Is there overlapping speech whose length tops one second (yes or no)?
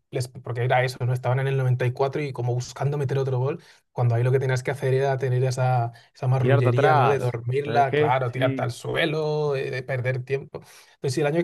yes